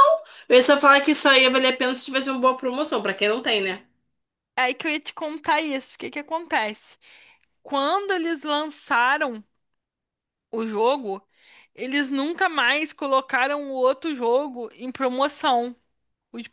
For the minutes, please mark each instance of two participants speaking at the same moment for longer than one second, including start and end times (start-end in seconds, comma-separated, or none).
none